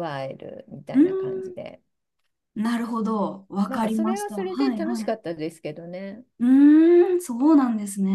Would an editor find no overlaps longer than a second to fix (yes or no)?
no